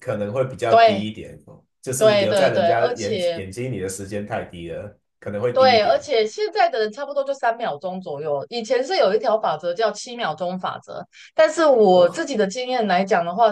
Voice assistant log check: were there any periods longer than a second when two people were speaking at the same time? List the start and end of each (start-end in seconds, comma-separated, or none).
2.0-3.4